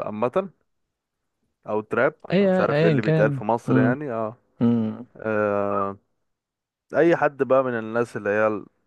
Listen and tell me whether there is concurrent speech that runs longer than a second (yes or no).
yes